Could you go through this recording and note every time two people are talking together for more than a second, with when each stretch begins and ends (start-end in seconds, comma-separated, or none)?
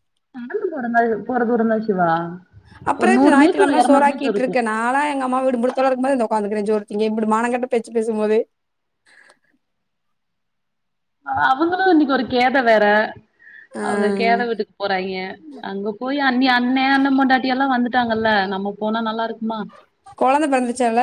3.0-4.6